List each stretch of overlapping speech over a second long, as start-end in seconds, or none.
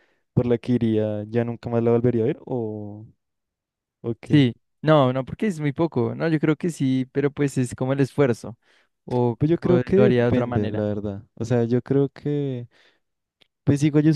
9.4-10.9